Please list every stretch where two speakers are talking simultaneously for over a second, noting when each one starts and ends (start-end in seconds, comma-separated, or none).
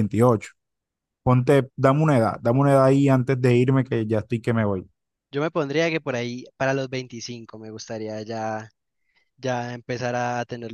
none